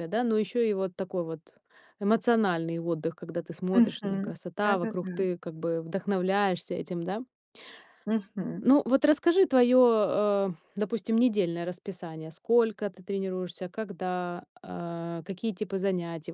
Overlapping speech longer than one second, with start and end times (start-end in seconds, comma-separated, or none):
3.7-5.2